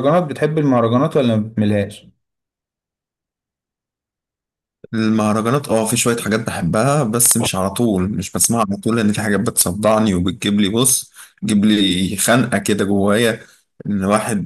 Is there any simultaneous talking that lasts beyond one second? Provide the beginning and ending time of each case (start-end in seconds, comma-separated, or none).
none